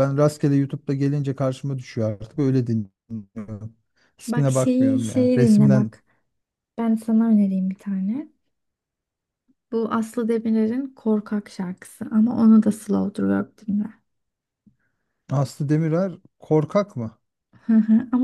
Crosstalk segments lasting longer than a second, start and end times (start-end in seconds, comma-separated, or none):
4.3-5.9